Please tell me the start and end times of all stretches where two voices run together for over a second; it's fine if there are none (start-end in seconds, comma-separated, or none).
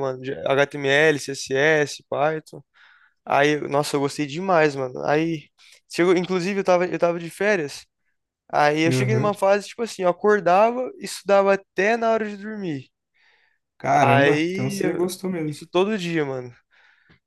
14.0-15.6